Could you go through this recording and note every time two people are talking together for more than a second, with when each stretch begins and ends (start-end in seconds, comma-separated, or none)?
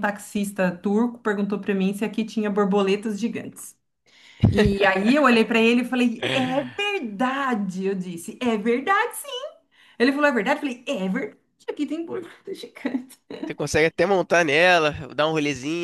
none